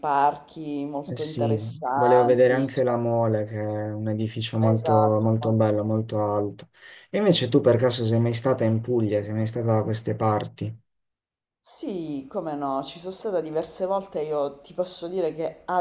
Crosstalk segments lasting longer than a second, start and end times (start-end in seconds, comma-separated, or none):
1.1-2.9